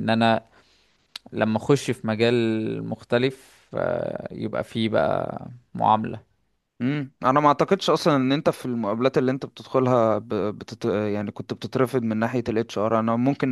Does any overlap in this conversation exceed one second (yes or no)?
no